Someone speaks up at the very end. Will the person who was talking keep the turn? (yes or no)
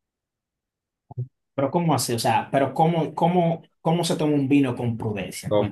no